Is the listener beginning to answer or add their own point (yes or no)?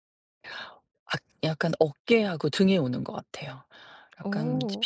no